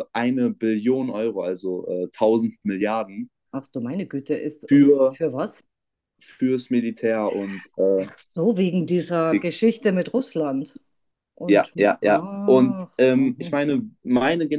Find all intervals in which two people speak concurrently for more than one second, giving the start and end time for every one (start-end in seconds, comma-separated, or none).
11.5-13.6